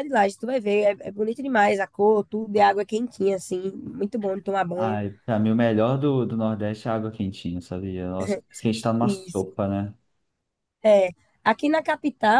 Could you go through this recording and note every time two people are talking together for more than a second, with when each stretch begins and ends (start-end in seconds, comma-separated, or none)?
none